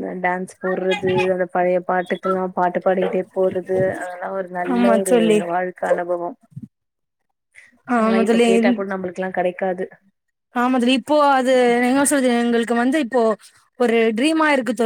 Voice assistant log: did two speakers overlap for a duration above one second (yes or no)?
no